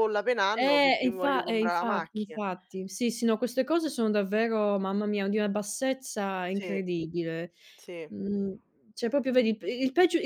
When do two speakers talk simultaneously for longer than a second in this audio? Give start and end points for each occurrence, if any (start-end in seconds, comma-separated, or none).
0.6-2.4